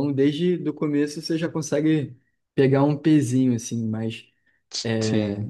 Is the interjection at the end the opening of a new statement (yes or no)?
no